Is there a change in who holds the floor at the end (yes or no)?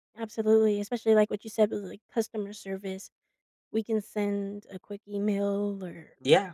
no